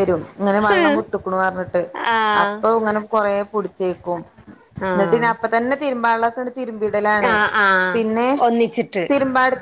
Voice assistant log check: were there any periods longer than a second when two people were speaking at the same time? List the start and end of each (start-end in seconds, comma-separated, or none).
none